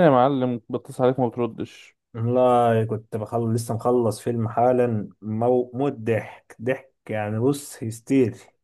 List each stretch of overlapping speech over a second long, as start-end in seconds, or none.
none